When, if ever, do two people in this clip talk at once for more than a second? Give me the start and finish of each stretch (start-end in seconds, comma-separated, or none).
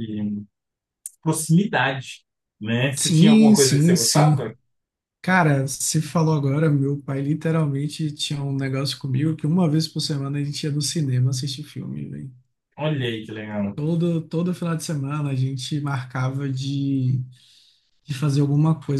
3.0-4.4